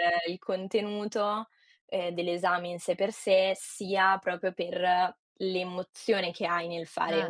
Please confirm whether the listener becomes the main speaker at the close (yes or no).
no